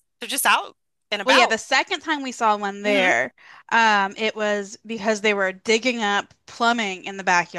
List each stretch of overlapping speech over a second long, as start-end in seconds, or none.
none